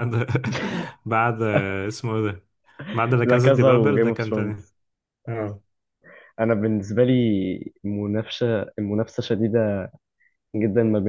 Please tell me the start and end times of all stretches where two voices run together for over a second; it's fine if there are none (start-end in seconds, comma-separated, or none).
3.2-4.7